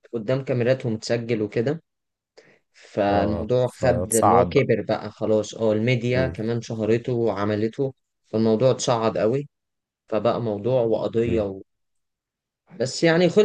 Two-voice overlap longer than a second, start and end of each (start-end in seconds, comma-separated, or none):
3.1-4.7